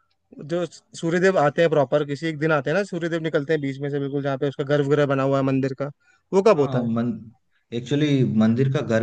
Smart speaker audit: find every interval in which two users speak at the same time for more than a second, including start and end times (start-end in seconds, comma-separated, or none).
none